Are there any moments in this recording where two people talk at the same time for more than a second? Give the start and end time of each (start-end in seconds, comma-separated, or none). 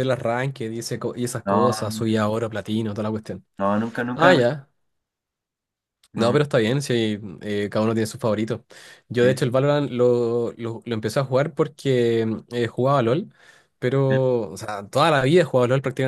none